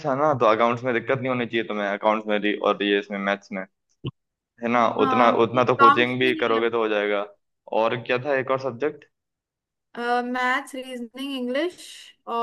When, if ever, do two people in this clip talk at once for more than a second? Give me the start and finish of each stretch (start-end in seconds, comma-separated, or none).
5.0-6.6